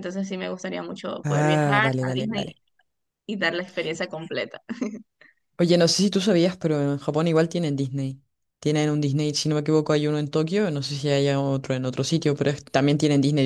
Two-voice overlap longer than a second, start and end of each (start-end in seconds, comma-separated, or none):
1.2-2.5